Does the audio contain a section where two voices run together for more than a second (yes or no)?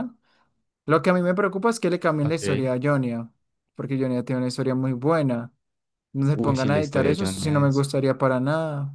yes